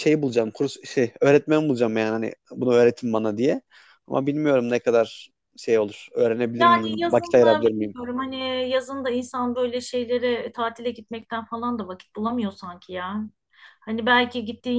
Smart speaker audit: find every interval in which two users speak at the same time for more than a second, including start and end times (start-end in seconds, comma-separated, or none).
6.6-8.0